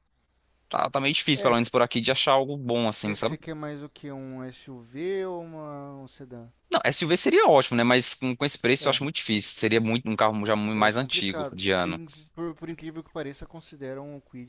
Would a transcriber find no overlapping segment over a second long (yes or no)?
no